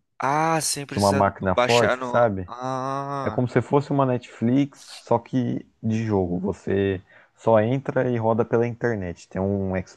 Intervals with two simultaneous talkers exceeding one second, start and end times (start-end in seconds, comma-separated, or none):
0.9-2.5